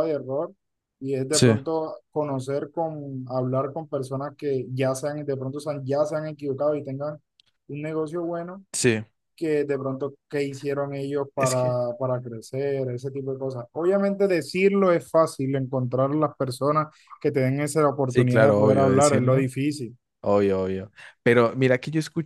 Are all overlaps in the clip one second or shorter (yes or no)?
no